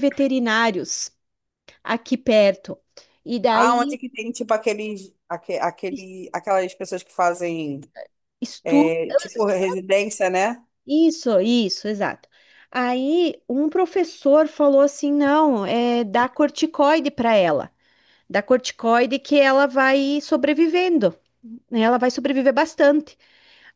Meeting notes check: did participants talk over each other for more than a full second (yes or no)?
no